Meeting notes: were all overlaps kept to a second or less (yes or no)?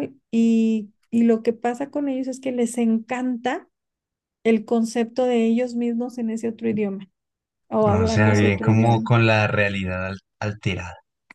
no